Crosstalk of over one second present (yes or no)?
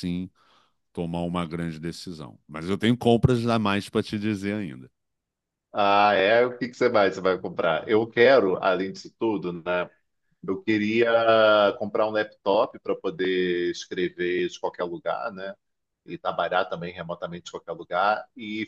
no